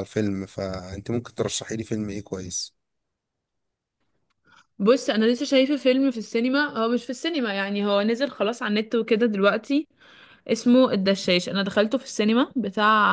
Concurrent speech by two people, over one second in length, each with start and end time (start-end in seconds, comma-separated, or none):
none